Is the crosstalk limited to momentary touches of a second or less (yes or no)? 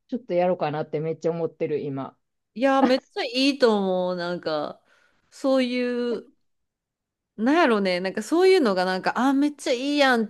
yes